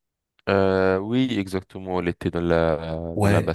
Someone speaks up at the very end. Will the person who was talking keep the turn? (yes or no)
no